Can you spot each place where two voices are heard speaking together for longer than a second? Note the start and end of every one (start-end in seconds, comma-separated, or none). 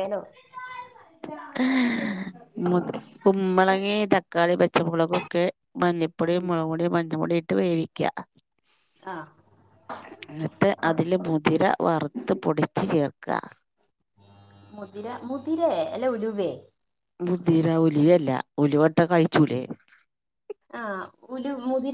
none